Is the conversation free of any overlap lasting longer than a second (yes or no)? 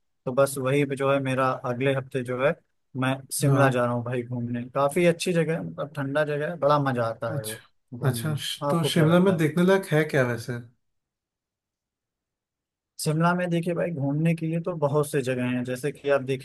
no